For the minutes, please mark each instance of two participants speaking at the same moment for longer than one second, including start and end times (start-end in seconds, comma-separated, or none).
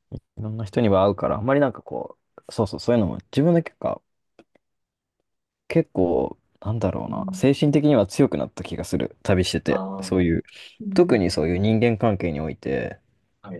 none